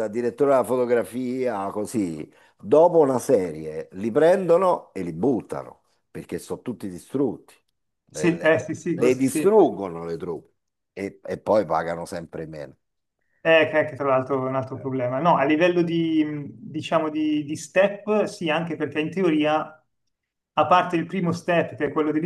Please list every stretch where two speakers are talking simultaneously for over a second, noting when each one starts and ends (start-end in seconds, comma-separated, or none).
8.1-9.5